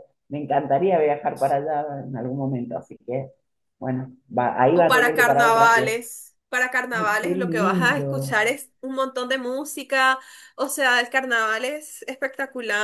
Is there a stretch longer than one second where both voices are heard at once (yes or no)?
yes